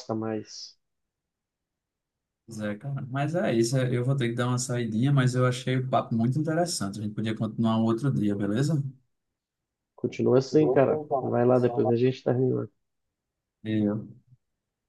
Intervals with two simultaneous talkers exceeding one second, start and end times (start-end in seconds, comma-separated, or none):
10.3-12.1